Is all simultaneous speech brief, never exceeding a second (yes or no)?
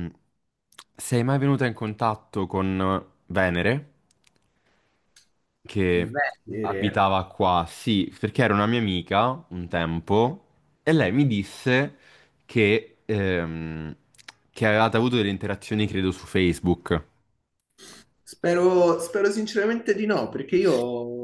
yes